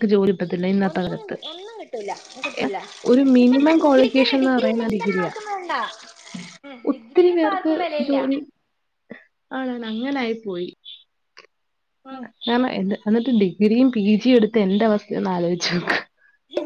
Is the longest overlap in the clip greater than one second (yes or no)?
yes